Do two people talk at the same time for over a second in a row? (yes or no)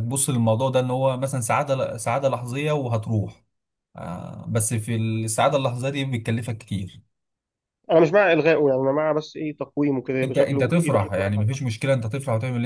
yes